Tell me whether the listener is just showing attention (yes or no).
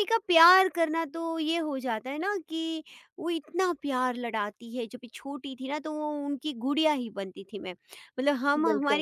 yes